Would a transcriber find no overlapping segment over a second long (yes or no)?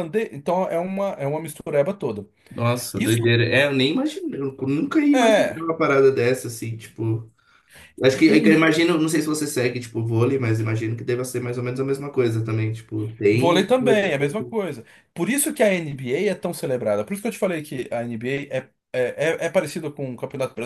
no